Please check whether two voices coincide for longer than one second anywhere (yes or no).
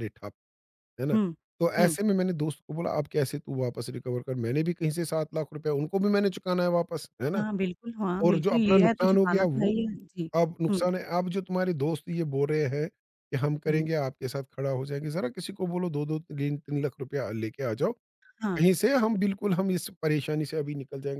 yes